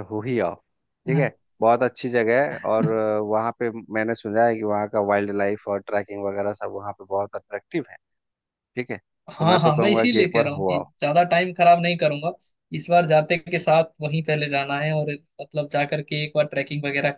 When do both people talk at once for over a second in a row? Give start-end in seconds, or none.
9.3-10.8